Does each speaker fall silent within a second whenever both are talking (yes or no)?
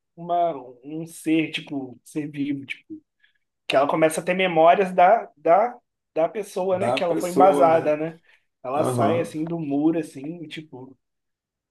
no